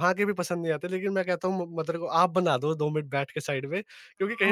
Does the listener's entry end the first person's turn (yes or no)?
no